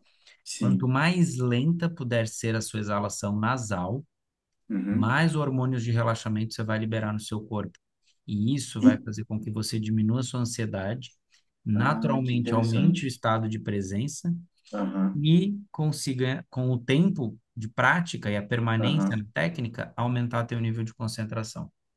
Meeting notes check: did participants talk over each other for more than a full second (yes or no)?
yes